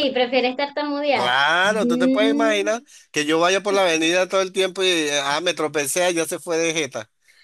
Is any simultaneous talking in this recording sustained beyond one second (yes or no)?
yes